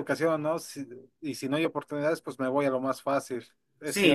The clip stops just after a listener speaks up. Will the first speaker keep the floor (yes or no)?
no